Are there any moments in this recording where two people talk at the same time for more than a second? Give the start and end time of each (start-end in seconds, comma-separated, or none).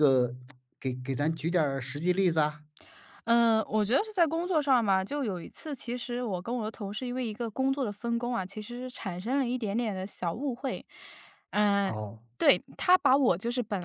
none